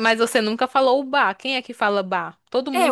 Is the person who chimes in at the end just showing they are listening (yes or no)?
no